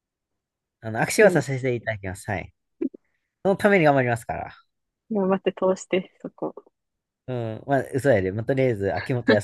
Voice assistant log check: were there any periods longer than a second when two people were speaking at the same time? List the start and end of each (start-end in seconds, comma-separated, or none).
none